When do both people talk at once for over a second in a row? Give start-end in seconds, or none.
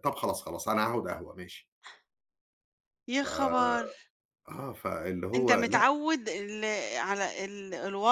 none